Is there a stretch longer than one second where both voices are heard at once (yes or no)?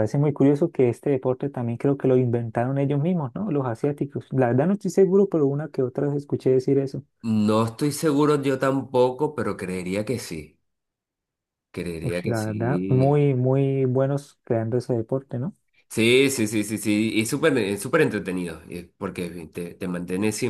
yes